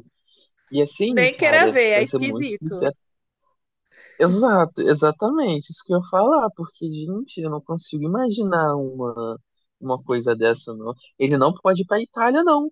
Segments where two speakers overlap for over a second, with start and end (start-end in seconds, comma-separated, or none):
1.0-2.9